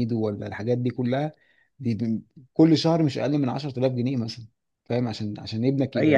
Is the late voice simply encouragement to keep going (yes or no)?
no